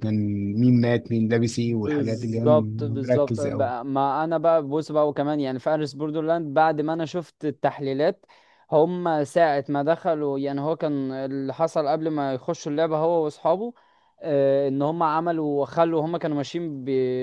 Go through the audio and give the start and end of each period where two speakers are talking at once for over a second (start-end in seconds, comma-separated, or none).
1.8-3.7